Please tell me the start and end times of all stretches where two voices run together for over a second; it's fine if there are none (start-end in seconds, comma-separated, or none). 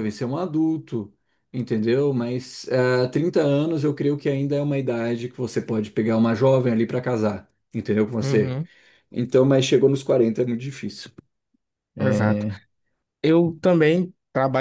none